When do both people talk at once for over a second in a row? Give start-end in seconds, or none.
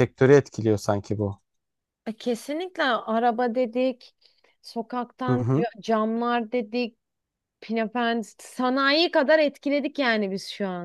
none